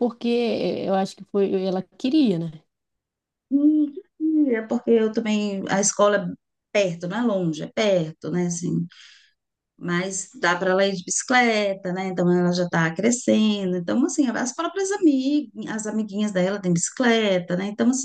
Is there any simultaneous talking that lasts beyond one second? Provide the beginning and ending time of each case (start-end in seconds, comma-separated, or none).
none